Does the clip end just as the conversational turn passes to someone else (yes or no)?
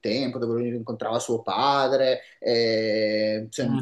yes